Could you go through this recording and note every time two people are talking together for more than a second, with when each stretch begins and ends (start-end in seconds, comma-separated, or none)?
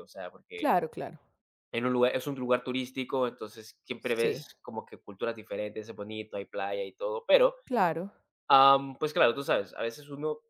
none